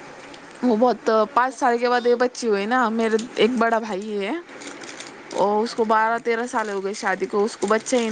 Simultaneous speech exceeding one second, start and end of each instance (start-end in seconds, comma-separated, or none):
0.6-2.0